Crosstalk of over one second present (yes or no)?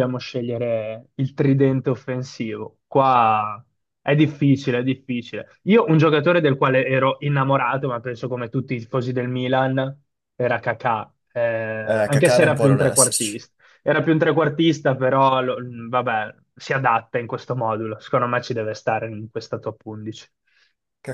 yes